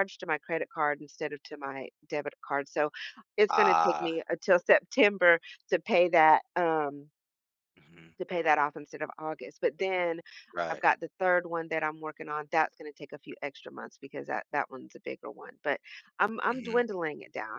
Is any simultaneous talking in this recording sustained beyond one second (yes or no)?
no